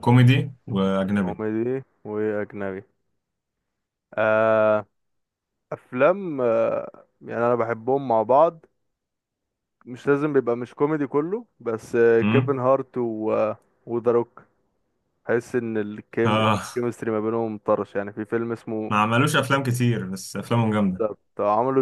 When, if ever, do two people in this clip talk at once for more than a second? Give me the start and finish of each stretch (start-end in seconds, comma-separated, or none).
none